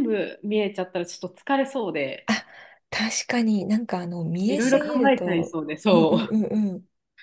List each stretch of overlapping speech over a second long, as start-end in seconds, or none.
4.5-6.4